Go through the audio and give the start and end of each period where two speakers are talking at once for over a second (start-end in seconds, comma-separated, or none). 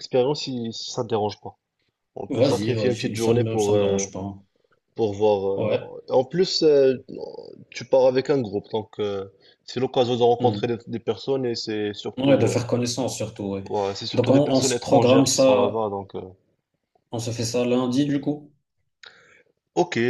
2.3-4.0, 14.1-15.8